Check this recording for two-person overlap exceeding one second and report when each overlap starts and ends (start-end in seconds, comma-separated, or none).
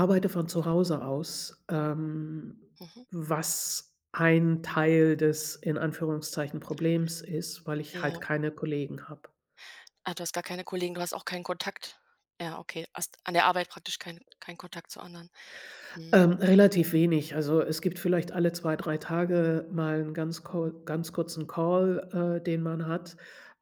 none